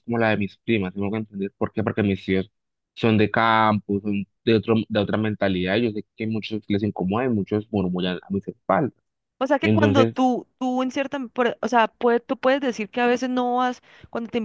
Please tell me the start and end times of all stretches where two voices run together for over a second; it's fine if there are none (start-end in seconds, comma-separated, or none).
none